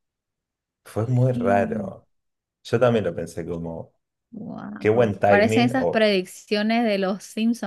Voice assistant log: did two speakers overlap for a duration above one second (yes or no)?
yes